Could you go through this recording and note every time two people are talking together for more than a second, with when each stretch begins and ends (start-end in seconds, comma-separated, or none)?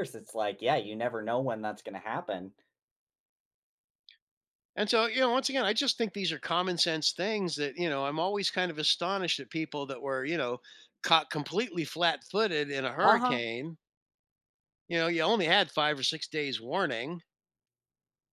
none